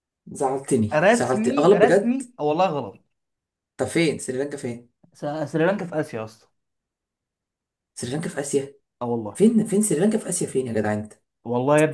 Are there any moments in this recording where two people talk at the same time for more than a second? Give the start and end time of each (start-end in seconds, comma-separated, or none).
0.9-2.2